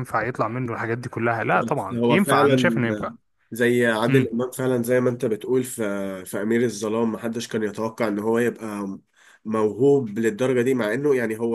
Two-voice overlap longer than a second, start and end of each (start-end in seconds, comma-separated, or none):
1.5-2.8